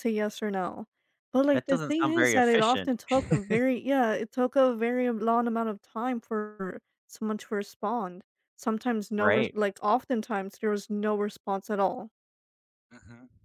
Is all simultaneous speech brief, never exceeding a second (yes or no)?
no